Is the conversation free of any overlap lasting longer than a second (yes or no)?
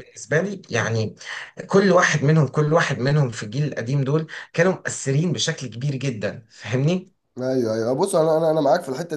yes